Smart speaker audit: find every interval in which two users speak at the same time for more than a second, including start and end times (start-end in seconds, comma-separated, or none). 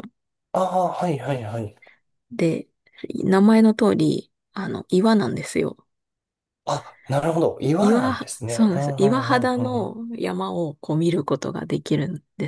7.8-10.0